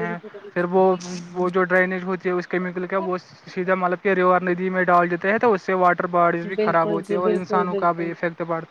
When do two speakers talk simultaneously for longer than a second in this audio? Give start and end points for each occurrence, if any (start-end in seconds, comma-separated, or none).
6.6-8.1